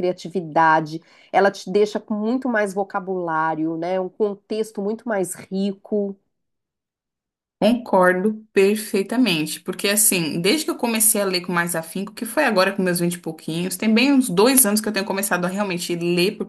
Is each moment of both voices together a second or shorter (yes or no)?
yes